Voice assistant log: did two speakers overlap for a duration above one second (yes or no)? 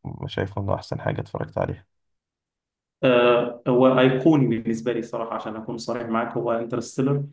no